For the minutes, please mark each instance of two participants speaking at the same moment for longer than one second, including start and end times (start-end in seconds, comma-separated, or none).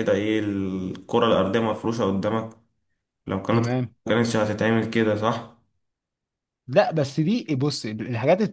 none